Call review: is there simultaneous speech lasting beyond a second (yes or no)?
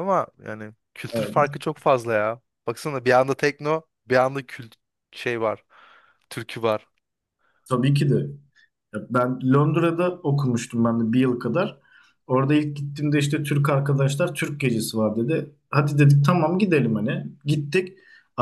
no